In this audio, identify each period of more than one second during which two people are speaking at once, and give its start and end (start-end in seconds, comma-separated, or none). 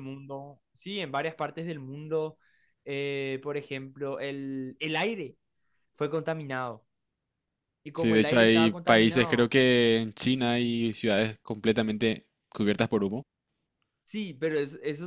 8.0-9.5